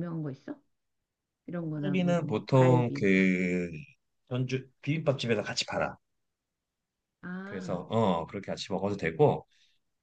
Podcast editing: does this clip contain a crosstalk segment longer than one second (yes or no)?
yes